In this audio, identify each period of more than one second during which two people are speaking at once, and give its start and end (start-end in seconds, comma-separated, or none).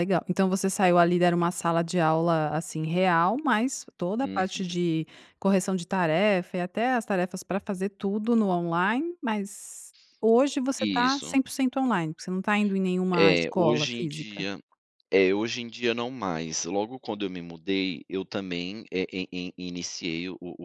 13.1-14.5